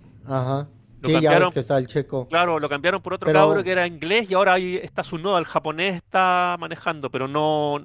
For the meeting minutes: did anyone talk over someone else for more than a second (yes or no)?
no